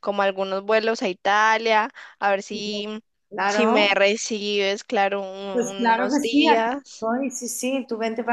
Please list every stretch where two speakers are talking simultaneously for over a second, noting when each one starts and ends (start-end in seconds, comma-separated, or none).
5.5-7.1